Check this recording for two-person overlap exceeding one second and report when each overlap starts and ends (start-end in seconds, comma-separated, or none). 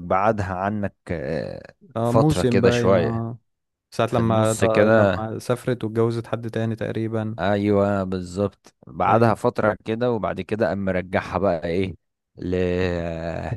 2.0-3.2, 4.1-5.3